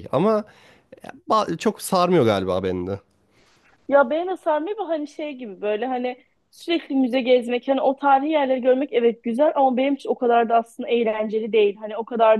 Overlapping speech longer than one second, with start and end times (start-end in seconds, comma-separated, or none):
none